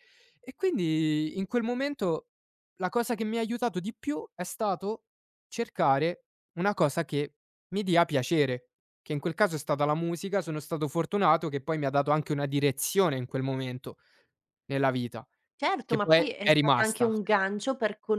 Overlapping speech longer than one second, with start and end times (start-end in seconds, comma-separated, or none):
15.8-17.1